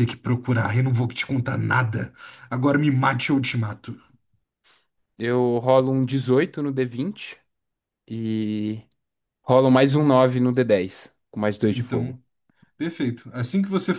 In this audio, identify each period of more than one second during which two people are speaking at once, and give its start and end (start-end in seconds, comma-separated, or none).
none